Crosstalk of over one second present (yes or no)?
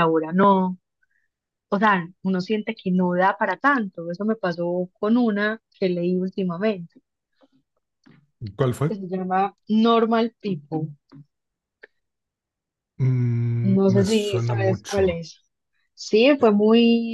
yes